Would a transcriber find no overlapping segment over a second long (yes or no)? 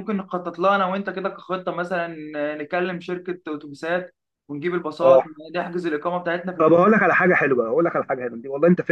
yes